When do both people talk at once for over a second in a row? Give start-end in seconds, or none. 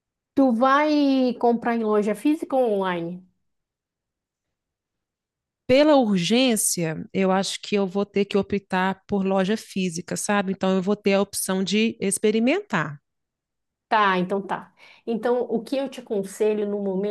none